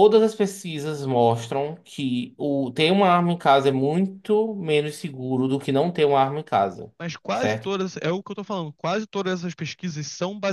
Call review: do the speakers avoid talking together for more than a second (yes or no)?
yes